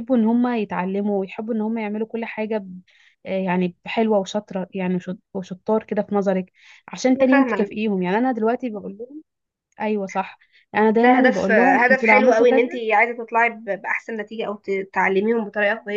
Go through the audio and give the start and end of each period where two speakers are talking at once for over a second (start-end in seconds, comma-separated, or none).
10.9-12.6